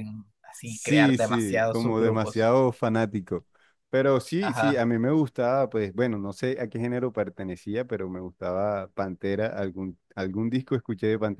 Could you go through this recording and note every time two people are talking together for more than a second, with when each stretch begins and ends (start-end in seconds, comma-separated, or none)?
0.6-2.5